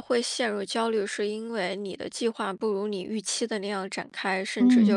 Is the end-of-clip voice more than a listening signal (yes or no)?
no